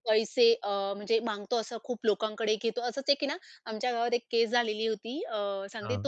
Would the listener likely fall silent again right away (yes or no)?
yes